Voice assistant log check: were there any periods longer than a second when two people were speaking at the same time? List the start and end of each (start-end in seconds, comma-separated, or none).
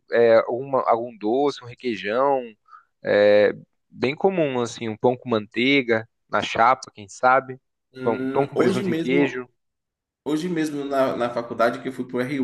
8.0-9.4